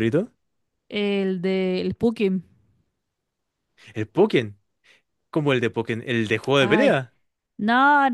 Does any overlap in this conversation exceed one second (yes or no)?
no